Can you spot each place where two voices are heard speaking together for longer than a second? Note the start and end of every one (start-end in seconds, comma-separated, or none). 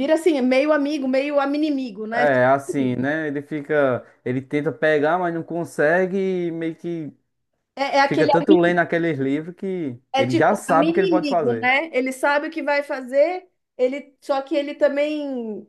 10.1-11.7